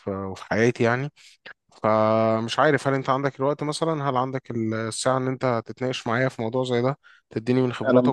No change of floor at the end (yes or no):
yes